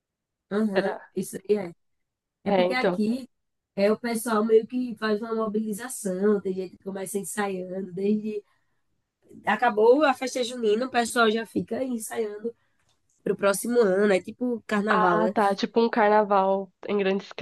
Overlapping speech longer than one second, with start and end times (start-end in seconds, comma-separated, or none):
none